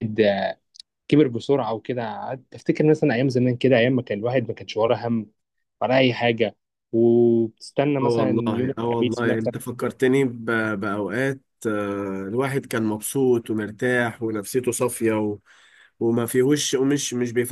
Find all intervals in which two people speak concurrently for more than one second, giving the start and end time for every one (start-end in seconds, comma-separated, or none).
8.0-9.5